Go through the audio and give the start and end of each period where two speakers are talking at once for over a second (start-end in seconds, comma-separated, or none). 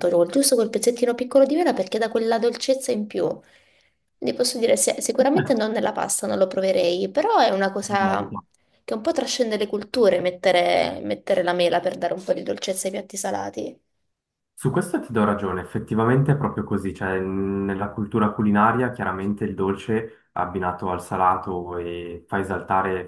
none